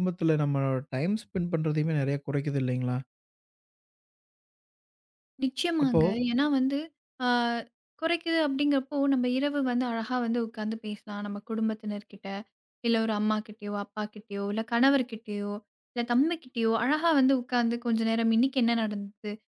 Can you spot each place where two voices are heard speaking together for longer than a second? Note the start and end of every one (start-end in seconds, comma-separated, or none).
none